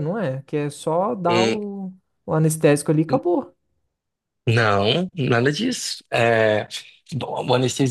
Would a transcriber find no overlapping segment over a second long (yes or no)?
yes